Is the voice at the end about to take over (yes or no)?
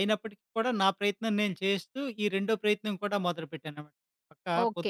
yes